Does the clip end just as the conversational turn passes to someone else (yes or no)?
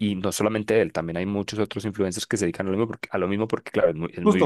yes